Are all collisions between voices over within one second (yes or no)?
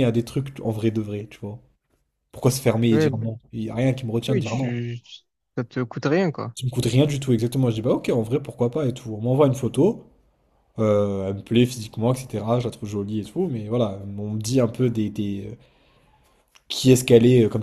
yes